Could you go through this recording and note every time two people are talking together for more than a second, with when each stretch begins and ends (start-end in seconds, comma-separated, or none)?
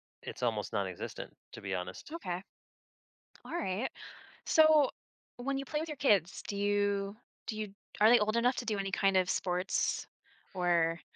none